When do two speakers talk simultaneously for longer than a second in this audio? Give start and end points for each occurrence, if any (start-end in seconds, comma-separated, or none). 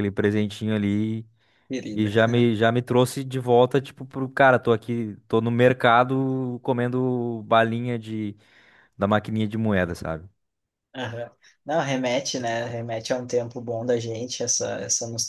none